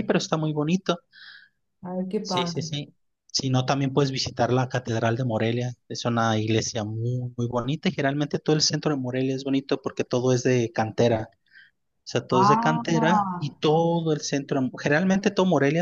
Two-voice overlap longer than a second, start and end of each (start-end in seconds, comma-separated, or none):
12.3-13.5